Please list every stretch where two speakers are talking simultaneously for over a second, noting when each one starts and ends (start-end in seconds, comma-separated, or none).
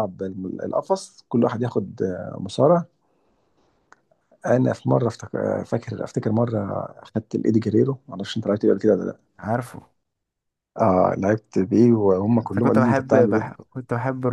12.4-13.7